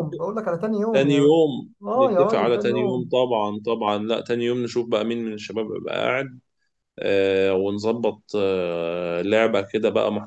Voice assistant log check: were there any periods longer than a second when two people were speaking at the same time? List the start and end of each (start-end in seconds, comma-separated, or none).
1.8-3.1